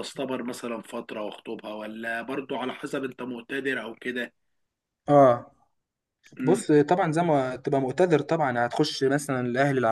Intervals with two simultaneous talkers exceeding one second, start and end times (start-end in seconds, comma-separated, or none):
none